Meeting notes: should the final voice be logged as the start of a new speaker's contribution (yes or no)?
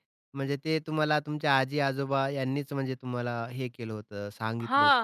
yes